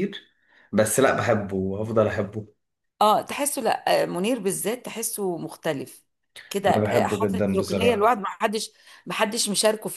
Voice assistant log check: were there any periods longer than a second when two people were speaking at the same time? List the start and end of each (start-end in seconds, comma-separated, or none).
6.7-8.1